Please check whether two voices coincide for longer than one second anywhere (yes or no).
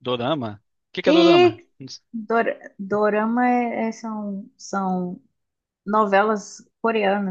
no